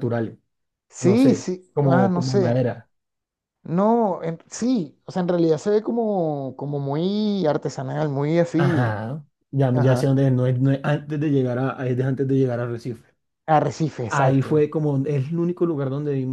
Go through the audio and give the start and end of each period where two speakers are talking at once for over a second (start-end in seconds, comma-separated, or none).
1.0-2.6